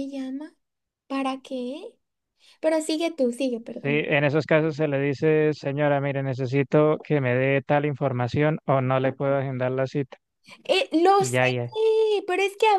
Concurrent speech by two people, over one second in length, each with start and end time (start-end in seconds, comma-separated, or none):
none